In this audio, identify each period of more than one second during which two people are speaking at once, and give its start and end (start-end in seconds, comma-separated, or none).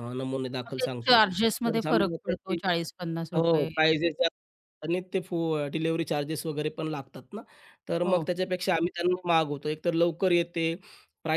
0.7-2.6